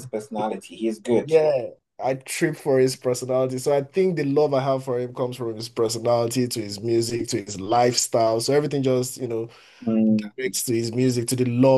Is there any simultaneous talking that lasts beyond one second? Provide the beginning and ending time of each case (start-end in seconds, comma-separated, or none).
none